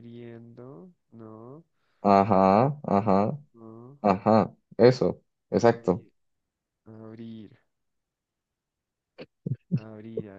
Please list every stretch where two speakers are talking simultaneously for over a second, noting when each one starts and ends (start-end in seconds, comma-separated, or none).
none